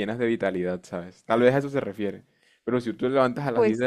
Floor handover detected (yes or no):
no